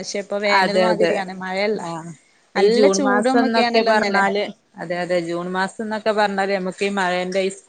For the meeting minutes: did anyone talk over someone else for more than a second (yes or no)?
yes